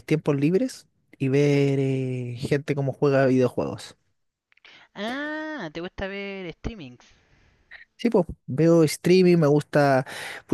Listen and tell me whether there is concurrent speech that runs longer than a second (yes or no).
no